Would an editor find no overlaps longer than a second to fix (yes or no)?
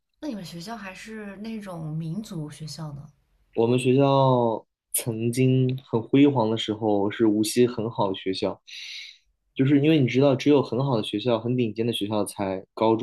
yes